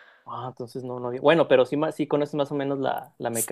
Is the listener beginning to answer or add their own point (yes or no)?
yes